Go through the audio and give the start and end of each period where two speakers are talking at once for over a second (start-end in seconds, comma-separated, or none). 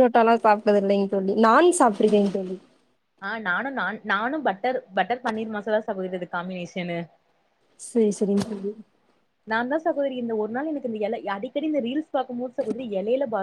none